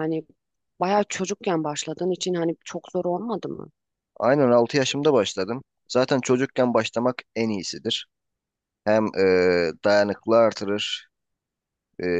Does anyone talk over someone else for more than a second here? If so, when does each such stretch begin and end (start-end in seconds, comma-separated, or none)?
none